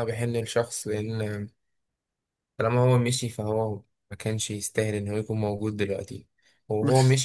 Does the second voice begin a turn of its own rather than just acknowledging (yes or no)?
no